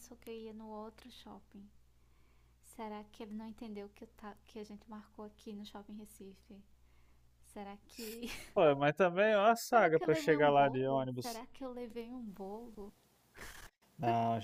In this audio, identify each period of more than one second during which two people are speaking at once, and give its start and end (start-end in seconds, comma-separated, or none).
9.7-11.4